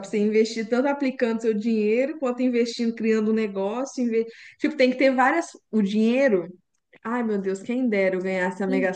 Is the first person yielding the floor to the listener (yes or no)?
yes